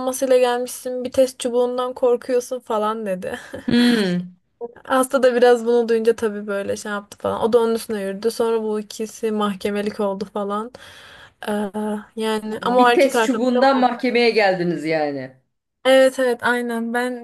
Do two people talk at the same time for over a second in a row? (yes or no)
yes